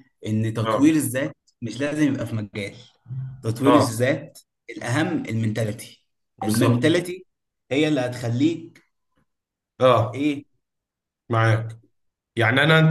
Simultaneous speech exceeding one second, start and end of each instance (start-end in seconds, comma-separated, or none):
none